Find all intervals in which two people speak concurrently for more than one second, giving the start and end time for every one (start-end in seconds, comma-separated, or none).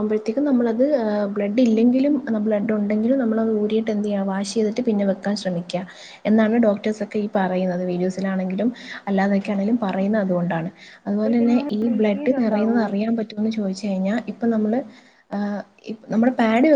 11.1-12.8